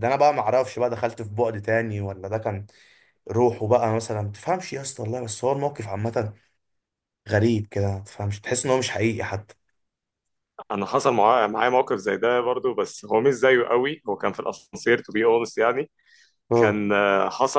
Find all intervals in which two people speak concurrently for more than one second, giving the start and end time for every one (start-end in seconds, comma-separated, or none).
none